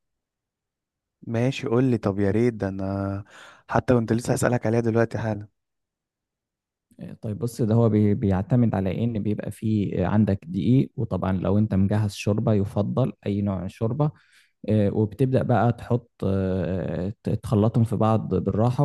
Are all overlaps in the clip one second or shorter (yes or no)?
yes